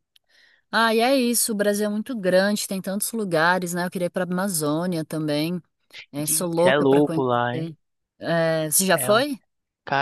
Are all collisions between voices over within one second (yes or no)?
no